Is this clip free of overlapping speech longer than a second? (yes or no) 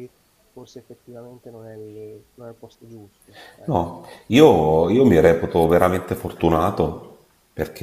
yes